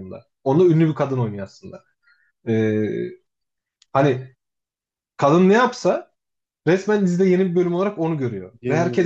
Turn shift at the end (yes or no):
no